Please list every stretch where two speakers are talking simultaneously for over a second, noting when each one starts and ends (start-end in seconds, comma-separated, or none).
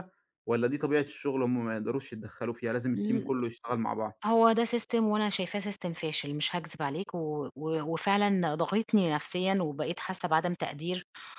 none